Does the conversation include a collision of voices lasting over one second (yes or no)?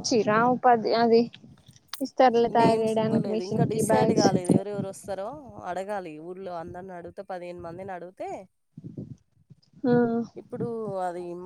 yes